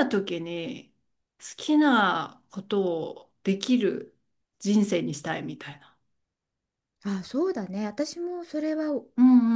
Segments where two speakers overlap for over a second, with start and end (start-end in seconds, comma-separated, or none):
none